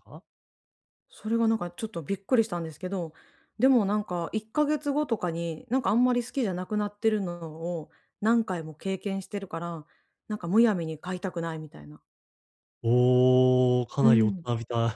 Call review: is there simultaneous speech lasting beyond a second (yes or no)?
no